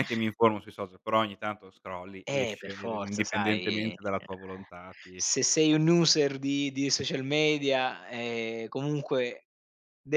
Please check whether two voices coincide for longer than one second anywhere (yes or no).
yes